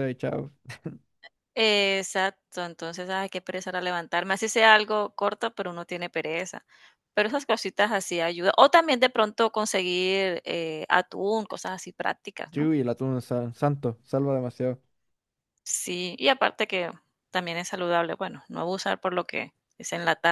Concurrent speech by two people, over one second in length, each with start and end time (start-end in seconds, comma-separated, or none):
none